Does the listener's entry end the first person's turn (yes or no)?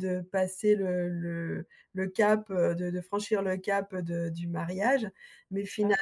no